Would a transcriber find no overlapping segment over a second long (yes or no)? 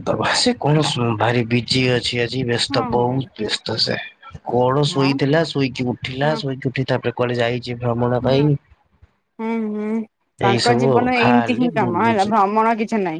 no